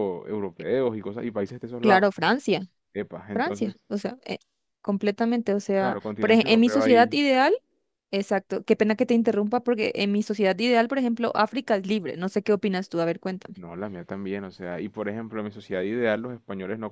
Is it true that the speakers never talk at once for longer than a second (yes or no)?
no